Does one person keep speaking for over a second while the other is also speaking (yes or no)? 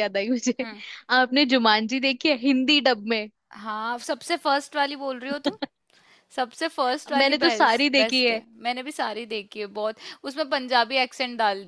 yes